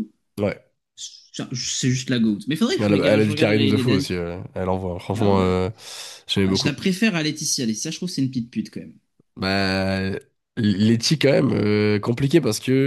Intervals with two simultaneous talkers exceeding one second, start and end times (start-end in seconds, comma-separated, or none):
2.8-4.1